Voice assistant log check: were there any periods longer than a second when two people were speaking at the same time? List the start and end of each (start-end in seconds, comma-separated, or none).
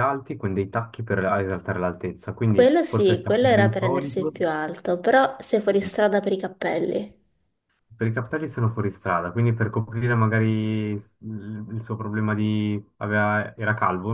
2.5-4.3